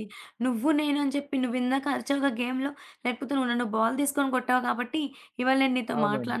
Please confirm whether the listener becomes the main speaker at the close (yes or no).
no